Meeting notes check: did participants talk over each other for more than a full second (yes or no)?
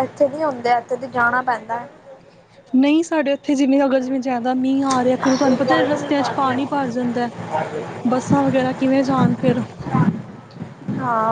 no